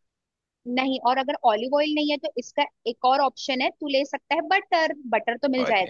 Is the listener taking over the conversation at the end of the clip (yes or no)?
yes